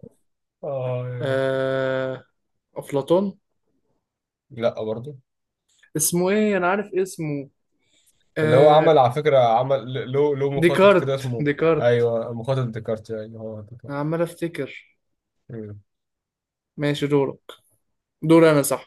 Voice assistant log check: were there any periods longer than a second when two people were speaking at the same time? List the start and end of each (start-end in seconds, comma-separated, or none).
10.6-12.1